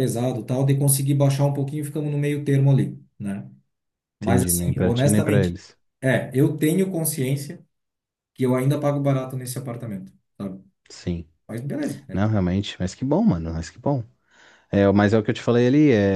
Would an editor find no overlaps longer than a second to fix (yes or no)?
no